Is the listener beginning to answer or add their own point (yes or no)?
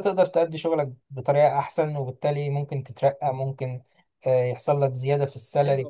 yes